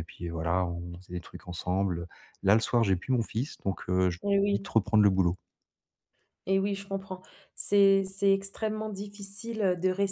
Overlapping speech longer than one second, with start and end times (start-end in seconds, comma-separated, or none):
none